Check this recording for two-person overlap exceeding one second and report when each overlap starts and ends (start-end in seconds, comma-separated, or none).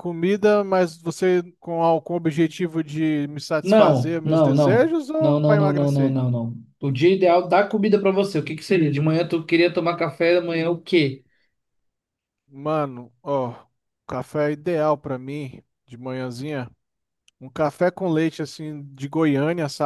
3.6-6.2